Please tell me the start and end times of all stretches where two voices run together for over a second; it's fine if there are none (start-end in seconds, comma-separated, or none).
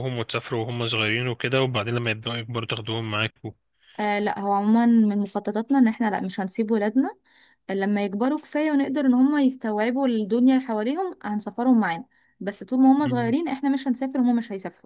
none